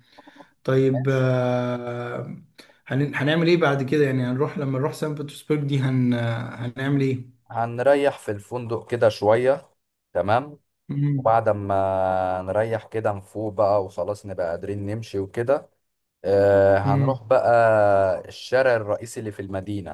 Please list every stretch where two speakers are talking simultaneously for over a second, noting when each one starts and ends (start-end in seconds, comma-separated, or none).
none